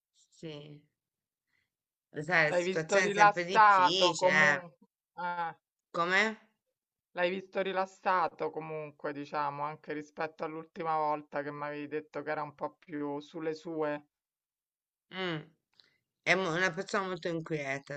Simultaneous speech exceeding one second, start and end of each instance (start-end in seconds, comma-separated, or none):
2.4-4.6